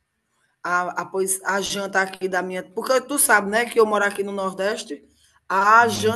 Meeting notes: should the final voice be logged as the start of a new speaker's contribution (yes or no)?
no